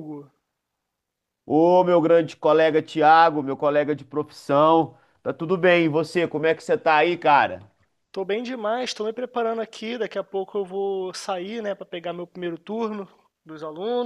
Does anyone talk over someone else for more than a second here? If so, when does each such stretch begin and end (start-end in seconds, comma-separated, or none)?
none